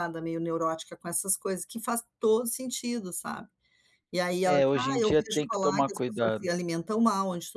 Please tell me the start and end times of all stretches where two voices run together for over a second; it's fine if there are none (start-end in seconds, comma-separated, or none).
4.4-6.5